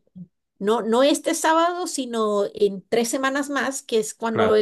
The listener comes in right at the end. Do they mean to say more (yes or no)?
no